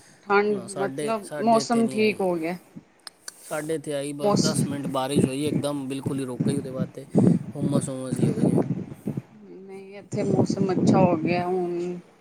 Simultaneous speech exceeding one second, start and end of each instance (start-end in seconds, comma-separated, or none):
0.5-2.4